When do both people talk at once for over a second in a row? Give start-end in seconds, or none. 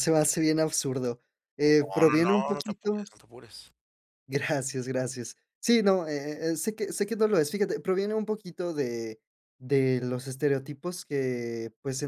1.8-3.1